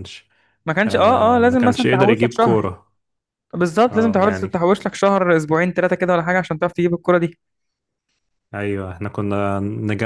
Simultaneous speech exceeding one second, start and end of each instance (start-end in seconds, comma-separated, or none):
0.9-2.7